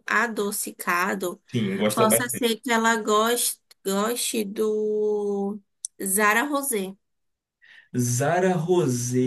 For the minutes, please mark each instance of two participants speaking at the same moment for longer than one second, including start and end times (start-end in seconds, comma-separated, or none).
none